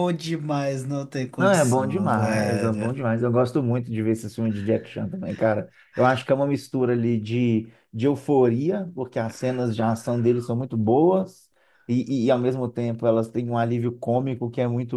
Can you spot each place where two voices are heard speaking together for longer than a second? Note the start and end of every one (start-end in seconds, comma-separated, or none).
1.4-2.9